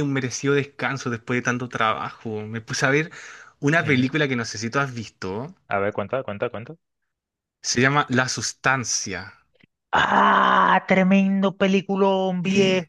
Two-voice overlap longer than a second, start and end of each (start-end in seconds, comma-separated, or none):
none